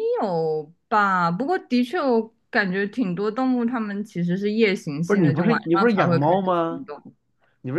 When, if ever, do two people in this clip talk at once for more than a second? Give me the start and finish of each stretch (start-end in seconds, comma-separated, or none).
5.0-6.8